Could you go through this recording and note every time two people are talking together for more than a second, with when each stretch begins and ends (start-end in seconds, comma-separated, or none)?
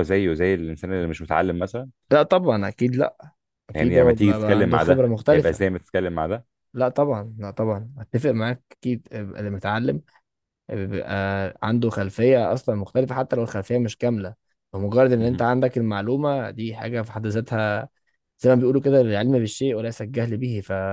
3.7-5.7